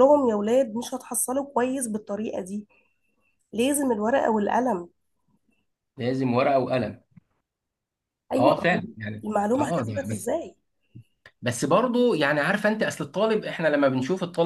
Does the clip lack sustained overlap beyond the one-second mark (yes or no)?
no